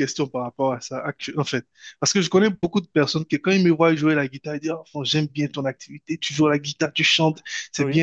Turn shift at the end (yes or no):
no